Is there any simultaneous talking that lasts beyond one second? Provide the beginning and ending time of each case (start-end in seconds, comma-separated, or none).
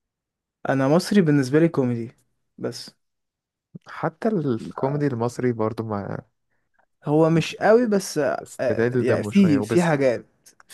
8.4-9.9